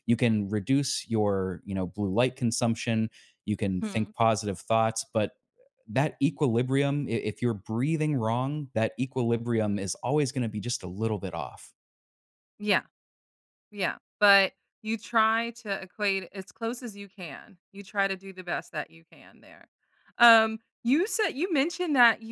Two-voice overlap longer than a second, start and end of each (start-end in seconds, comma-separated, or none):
none